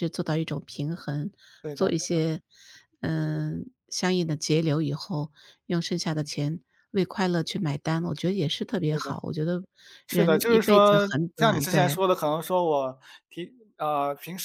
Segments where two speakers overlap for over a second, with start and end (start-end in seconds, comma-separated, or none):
10.1-12.0